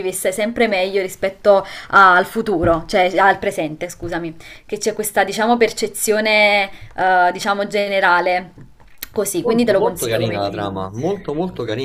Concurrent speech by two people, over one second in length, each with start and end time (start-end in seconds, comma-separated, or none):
9.4-10.7